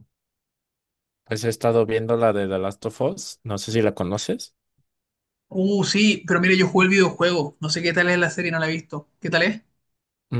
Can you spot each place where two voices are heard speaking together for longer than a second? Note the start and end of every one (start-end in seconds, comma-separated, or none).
none